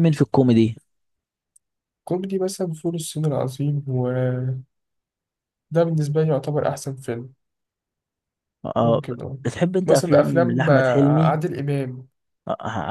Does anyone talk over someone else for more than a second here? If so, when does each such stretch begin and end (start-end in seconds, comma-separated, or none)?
9.8-11.4